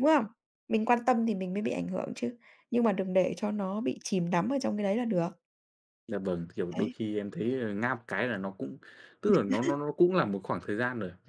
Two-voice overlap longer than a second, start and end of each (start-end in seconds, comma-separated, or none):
none